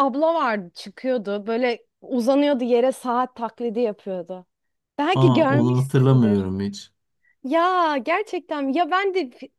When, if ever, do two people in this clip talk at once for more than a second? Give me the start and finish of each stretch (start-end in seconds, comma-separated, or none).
5.1-6.4